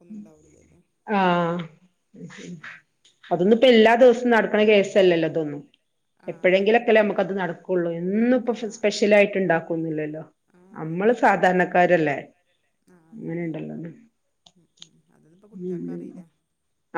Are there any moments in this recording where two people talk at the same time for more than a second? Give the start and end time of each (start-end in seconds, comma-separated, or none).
none